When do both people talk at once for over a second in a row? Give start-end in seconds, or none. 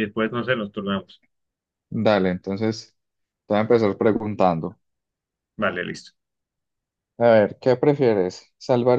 none